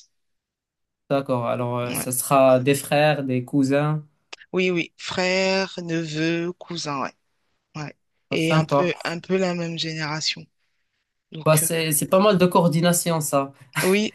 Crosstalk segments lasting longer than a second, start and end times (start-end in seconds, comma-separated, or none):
none